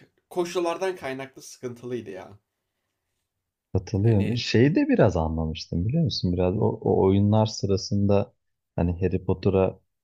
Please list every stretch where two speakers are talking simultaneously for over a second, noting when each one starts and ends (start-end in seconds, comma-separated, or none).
none